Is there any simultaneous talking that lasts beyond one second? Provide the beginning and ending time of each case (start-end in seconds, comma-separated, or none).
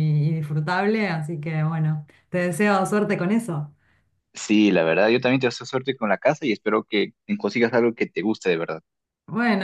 none